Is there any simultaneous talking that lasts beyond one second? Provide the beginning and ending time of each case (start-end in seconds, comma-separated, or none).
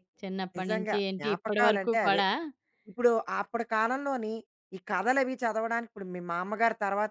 0.6-2.2